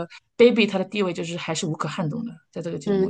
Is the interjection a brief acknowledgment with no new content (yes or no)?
no